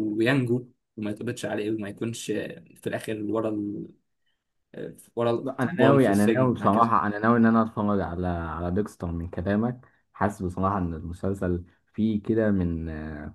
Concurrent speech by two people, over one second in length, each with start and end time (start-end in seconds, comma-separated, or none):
5.4-6.9